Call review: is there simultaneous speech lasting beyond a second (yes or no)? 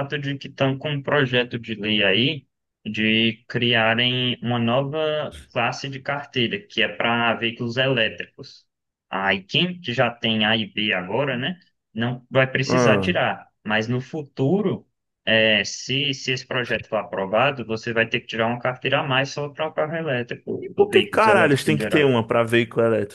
yes